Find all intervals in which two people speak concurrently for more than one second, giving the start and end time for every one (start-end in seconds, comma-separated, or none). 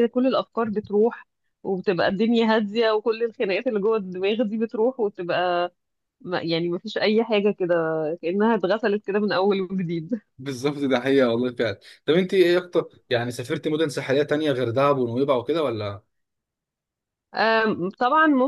none